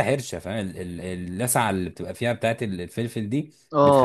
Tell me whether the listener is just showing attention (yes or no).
no